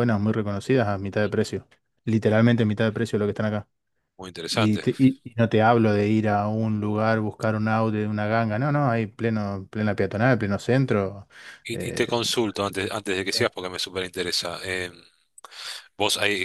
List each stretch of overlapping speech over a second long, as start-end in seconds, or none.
none